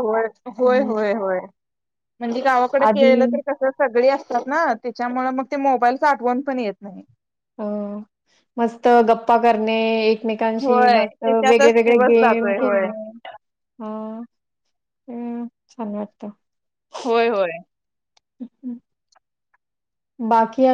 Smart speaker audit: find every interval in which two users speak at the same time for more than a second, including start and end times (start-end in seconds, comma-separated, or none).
10.6-12.9